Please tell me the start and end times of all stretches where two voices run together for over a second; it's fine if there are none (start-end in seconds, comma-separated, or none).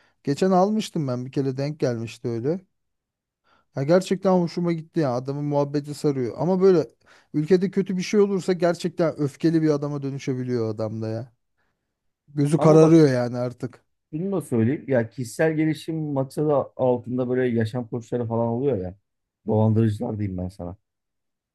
none